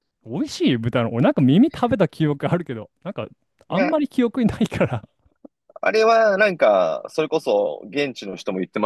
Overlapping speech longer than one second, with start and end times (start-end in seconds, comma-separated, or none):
none